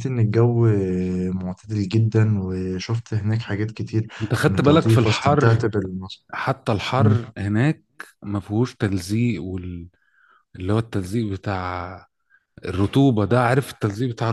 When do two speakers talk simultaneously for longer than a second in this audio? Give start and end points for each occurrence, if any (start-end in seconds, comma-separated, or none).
4.2-5.6